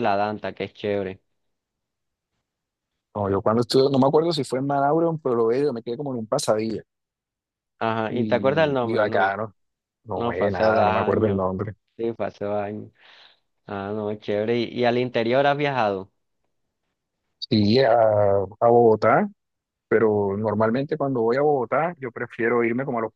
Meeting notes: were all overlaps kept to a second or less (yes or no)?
no